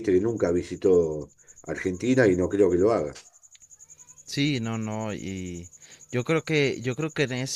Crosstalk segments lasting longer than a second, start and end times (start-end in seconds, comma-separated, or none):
none